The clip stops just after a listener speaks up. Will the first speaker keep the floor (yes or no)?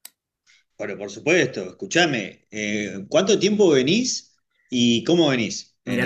no